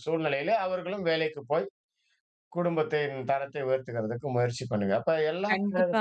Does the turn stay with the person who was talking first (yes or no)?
no